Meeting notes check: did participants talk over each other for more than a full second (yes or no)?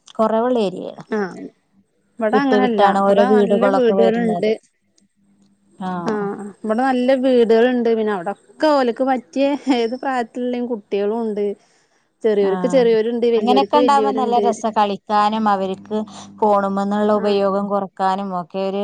yes